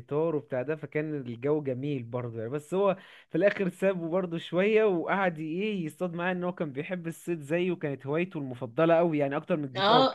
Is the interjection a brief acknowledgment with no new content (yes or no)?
no